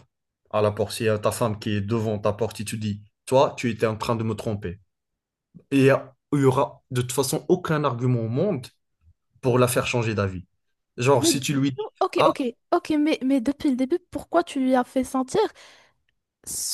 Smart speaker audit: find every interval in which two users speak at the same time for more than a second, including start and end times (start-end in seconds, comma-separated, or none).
none